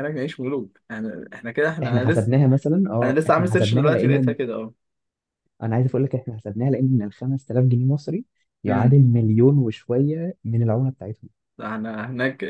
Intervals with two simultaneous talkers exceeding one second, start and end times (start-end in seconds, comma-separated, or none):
3.0-4.5